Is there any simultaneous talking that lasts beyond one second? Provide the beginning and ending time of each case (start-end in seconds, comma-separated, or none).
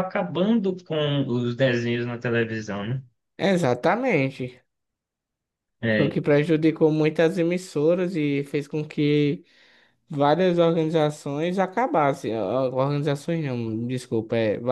none